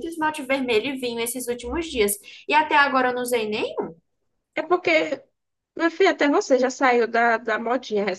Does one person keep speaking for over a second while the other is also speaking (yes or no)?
no